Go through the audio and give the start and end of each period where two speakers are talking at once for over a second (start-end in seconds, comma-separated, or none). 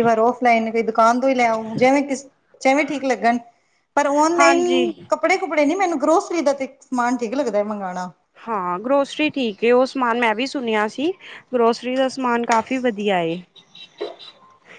none